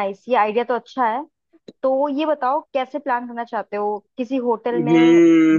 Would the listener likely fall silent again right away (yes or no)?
no